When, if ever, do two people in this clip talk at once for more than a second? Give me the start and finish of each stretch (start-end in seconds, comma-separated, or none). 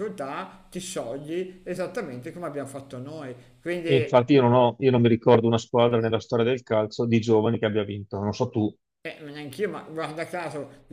none